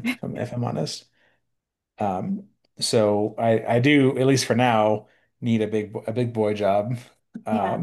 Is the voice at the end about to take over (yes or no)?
no